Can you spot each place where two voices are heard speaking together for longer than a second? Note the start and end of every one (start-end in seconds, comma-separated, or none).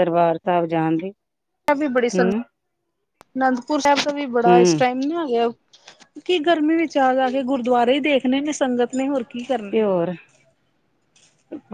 none